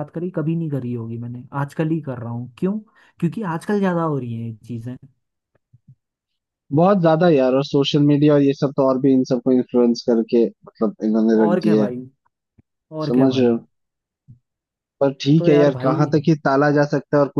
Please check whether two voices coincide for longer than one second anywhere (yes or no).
no